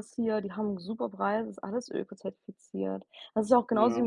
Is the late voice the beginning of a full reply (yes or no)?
no